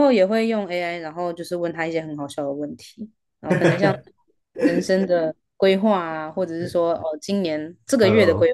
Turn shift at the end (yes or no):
no